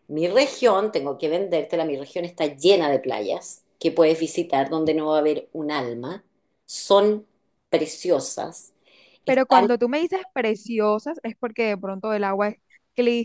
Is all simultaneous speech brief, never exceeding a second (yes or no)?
yes